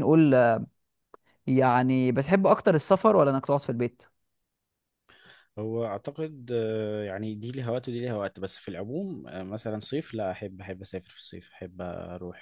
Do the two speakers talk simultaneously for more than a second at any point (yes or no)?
no